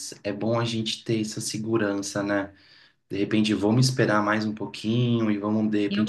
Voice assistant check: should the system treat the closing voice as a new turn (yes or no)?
no